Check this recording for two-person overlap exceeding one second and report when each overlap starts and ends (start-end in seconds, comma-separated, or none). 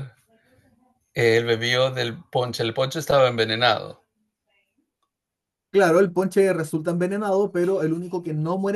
none